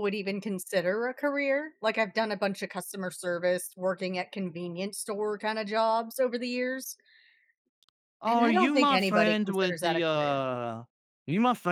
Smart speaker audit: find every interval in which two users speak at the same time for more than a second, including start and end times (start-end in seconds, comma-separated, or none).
8.3-10.4